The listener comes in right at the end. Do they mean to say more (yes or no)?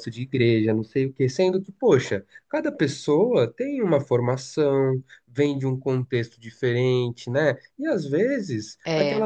no